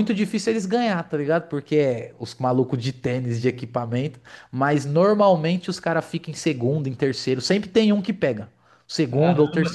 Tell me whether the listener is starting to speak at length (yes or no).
yes